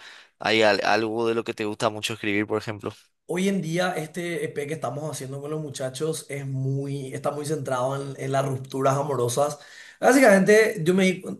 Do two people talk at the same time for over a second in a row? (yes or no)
no